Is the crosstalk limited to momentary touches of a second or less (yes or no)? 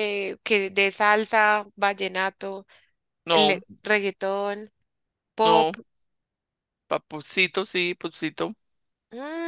yes